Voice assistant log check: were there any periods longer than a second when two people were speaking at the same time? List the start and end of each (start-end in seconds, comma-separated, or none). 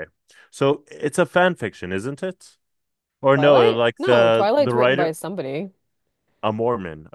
3.3-5.2